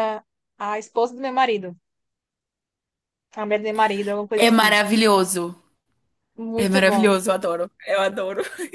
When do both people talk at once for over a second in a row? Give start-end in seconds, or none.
none